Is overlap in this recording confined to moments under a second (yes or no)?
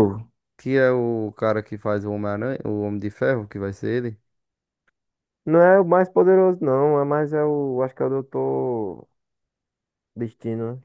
yes